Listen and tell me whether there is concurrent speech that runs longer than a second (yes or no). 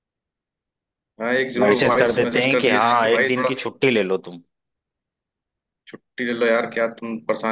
yes